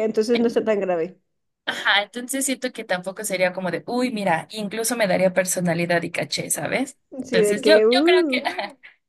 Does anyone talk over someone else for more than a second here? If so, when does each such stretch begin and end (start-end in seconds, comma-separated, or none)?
7.2-8.5